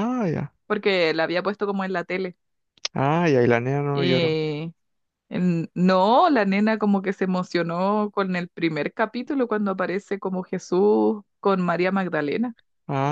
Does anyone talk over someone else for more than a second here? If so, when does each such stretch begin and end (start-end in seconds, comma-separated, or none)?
none